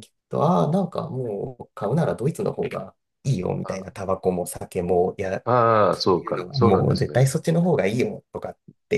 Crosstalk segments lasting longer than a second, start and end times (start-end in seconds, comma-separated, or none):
5.9-7.3